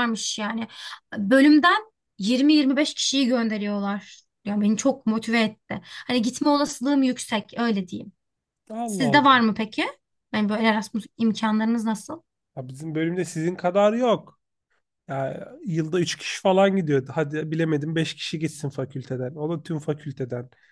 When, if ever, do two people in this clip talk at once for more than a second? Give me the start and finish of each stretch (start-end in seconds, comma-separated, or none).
none